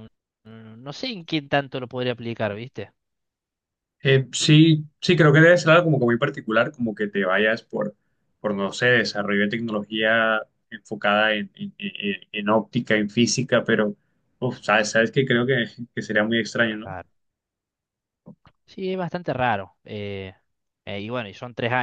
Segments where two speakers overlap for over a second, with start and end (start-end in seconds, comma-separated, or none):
none